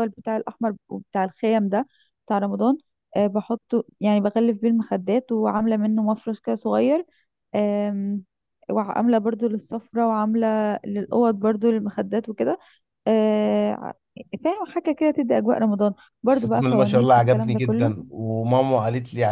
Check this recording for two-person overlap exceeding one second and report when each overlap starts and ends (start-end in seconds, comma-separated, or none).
16.3-17.9